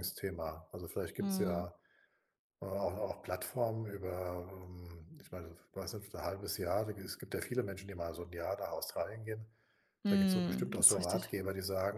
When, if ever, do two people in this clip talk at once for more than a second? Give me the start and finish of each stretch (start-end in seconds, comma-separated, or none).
10.1-11.3